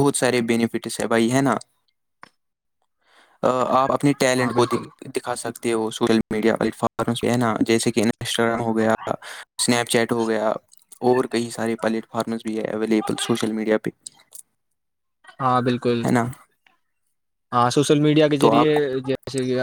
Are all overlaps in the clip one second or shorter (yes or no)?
yes